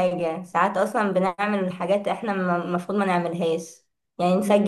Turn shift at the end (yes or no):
no